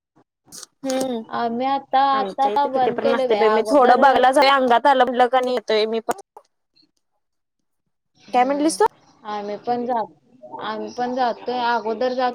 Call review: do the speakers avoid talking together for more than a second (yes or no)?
no